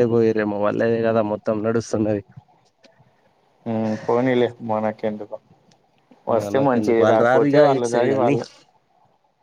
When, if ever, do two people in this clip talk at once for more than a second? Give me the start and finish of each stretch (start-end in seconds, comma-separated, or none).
6.4-8.3